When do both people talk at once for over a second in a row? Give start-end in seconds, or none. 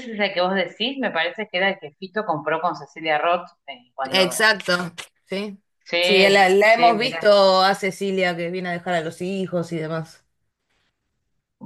none